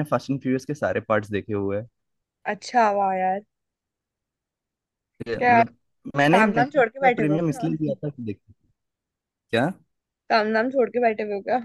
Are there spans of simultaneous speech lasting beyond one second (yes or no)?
yes